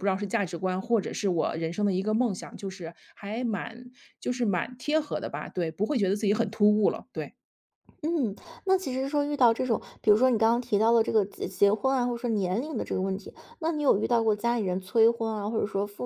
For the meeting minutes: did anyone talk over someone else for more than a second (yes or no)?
no